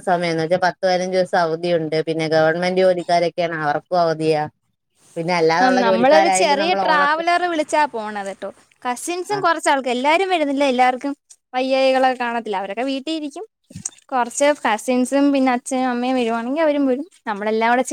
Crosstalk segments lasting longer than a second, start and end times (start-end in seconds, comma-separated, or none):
5.6-7.2